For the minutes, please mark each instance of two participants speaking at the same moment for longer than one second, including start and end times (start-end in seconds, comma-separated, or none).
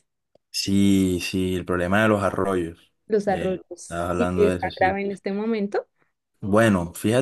3.0-5.0